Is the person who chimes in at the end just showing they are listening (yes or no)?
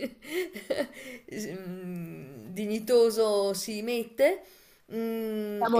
yes